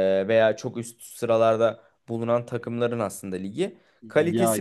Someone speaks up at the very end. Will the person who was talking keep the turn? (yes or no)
yes